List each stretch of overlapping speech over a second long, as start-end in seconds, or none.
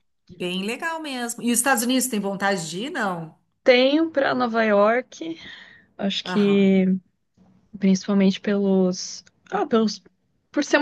none